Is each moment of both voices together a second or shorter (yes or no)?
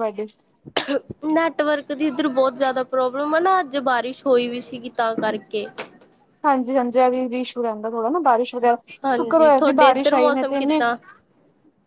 no